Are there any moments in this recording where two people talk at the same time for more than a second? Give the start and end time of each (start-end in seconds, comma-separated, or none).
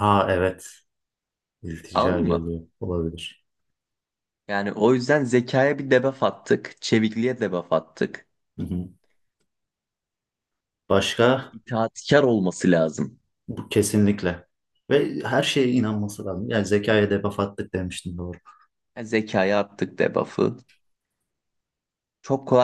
none